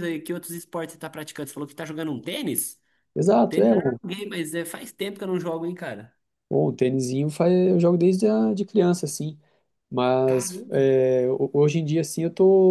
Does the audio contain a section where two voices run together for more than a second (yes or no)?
no